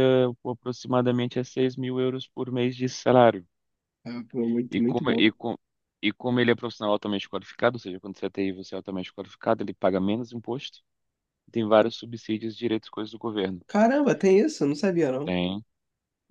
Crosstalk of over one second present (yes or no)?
no